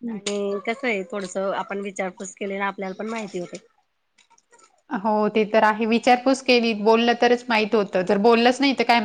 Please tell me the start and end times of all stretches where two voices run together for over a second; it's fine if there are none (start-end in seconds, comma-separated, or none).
none